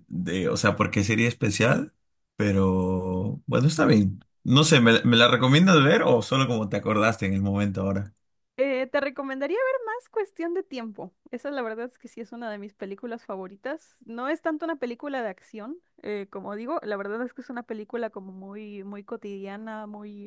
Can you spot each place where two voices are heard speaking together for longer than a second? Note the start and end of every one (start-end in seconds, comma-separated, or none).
none